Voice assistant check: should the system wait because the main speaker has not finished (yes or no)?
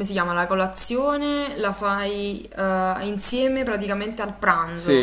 no